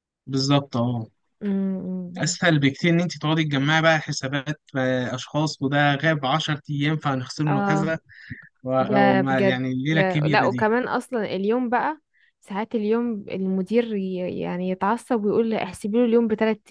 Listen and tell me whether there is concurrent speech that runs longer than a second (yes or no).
yes